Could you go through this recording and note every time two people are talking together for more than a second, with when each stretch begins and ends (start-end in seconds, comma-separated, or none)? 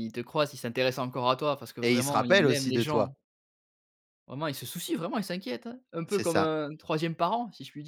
1.8-3.1